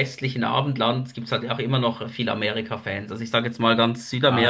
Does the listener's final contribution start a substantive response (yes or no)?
yes